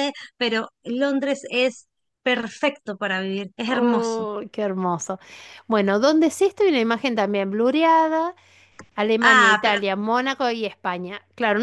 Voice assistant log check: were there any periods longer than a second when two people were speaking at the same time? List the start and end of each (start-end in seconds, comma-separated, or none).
none